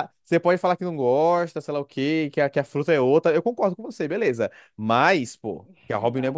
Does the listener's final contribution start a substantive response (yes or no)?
yes